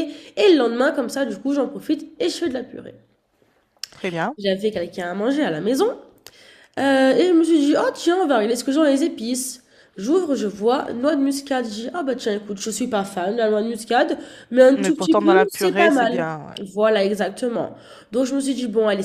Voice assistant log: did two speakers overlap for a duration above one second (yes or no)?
yes